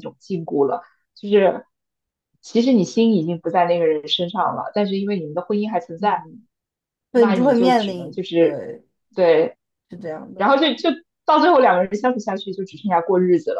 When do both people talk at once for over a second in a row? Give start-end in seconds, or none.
7.1-8.6